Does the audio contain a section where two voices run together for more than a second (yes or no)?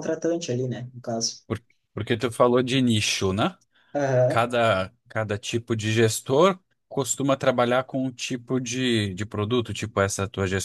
no